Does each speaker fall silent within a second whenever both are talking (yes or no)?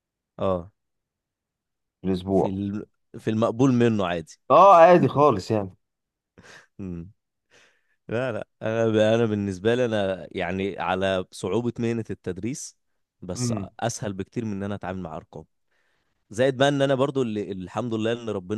yes